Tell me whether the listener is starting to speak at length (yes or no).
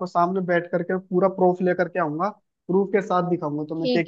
yes